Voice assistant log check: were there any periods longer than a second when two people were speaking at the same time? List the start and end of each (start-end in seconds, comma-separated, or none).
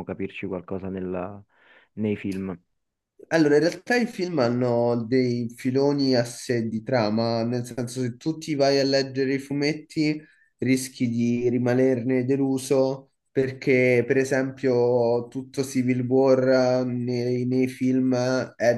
none